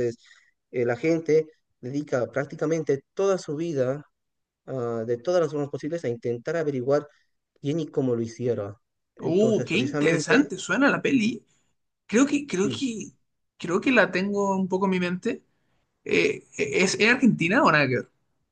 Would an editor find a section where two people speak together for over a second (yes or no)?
yes